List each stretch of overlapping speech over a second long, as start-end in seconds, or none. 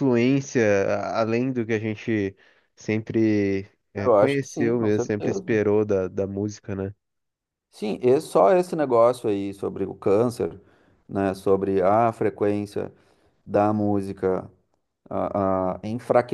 4.0-5.4